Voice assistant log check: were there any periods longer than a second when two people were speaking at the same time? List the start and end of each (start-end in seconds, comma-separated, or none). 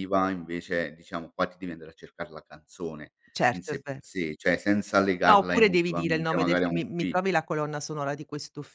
5.2-7.2